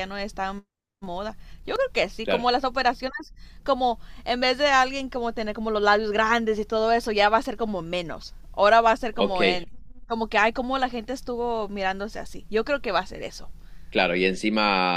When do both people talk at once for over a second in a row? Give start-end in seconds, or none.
none